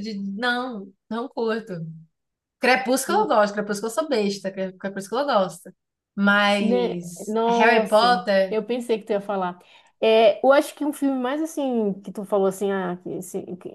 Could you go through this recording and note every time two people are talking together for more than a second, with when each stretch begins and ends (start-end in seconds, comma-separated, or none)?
6.6-8.6